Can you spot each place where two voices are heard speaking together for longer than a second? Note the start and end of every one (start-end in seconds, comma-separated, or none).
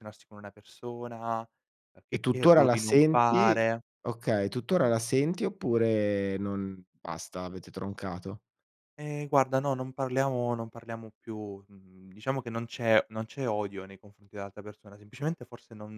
2.1-3.6